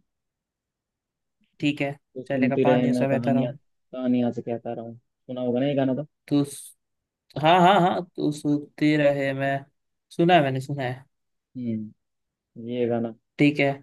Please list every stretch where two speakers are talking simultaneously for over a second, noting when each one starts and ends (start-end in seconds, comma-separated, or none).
2.1-3.6